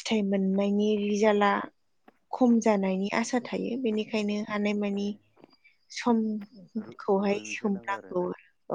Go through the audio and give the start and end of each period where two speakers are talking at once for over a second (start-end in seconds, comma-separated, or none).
6.8-8.2